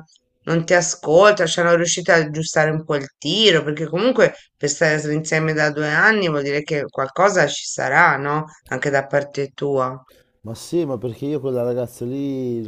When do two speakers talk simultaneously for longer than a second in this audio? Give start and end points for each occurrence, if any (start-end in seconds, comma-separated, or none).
none